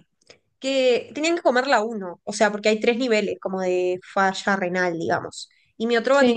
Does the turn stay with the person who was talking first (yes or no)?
yes